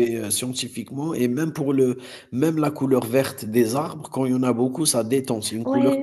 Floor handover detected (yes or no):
yes